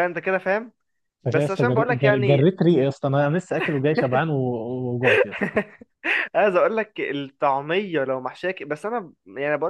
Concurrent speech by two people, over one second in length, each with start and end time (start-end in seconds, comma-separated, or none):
1.3-2.5